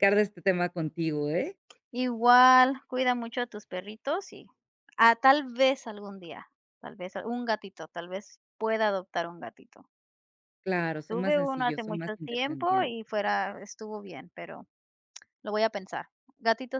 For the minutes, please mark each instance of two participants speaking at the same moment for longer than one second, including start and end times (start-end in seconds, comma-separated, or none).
11.1-12.9